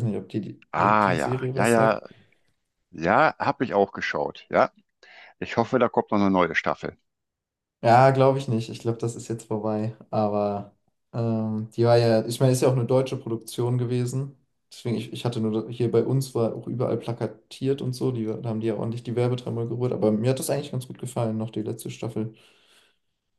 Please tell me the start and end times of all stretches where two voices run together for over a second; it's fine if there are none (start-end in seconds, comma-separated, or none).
0.7-2.0